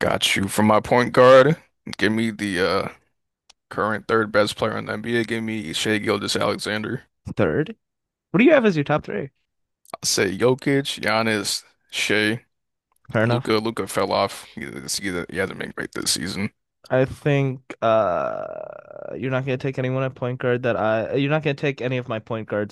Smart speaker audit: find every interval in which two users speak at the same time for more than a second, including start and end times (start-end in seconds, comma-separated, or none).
none